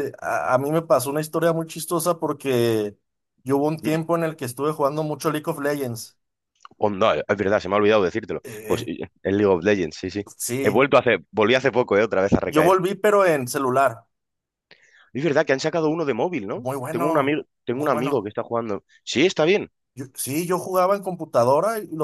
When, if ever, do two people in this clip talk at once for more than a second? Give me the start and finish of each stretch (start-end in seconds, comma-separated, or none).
16.5-18.3